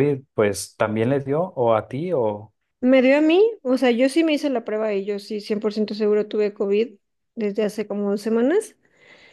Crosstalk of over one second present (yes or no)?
no